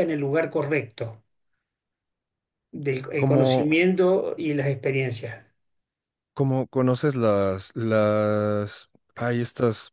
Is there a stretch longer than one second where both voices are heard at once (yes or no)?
no